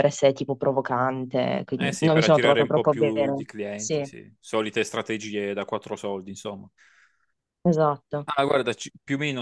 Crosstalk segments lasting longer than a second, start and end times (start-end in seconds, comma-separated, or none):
1.8-4.1